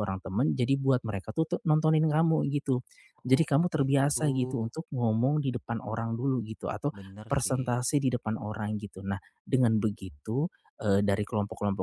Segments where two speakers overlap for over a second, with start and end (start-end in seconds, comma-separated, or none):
3.3-4.7